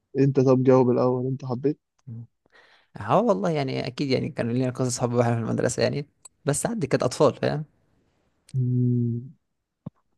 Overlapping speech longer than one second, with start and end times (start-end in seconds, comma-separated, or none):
none